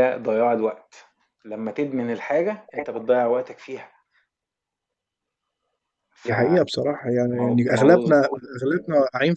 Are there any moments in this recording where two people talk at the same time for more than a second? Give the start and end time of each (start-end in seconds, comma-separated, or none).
none